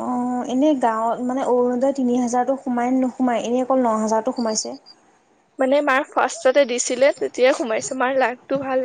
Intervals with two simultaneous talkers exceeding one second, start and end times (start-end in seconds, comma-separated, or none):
none